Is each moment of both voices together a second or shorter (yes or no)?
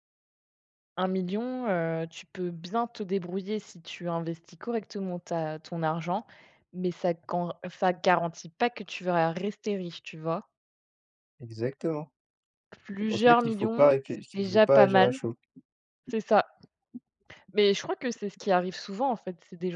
no